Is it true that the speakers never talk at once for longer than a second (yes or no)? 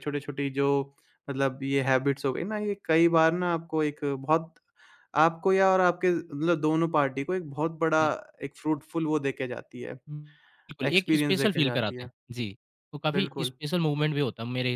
no